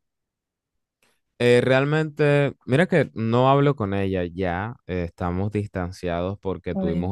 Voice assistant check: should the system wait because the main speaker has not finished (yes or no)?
yes